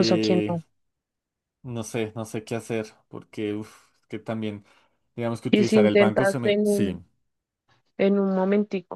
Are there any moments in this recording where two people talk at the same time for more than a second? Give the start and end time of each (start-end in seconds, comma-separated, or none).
5.5-7.0